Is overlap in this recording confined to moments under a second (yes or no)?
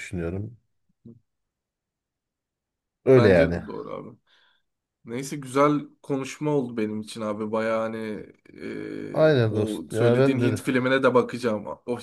no